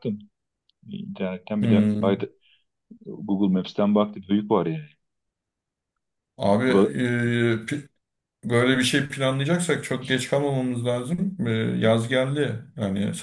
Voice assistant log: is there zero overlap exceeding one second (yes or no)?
yes